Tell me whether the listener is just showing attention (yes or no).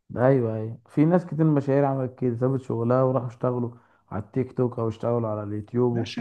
no